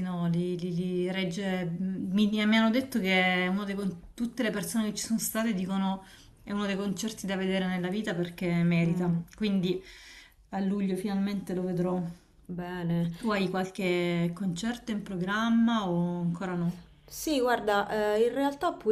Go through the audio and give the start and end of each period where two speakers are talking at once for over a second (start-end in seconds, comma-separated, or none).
none